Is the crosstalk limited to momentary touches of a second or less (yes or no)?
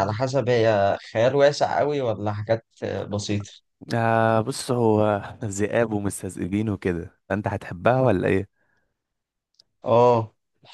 yes